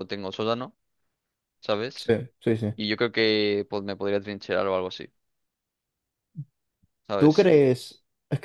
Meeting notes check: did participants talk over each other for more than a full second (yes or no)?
no